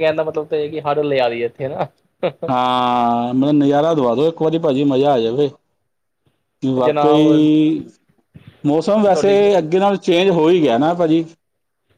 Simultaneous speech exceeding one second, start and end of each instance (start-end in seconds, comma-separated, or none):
none